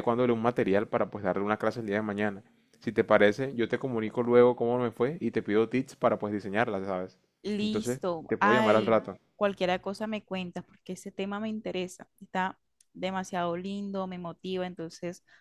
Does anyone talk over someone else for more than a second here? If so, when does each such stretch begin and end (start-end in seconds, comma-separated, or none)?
7.6-9.2